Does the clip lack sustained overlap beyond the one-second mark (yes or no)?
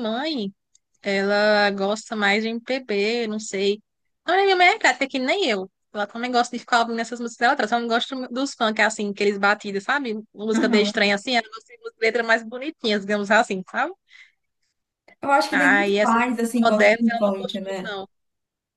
no